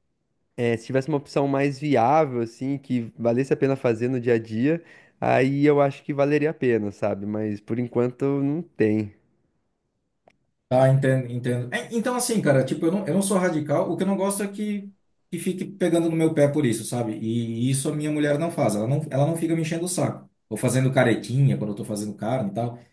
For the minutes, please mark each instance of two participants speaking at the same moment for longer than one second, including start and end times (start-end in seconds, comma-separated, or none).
none